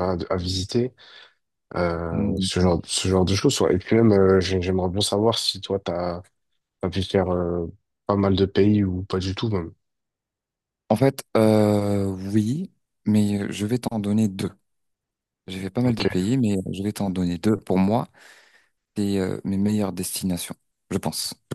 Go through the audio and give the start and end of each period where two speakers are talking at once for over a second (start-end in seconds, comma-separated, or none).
none